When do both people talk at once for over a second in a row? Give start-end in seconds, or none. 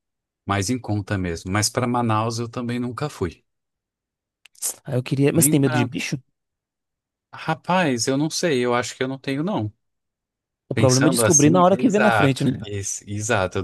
10.7-12.6